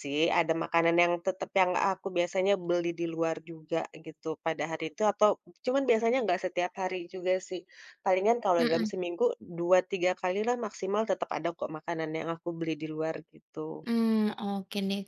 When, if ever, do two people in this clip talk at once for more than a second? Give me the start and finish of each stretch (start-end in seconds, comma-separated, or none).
none